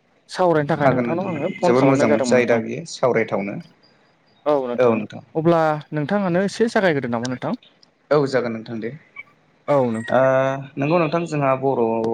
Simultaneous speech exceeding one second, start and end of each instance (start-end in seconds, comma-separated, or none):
0.8-2.6